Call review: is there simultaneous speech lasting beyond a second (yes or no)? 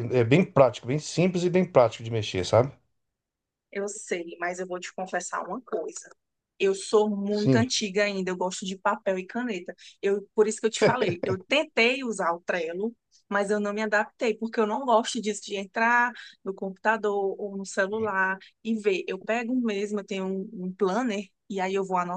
no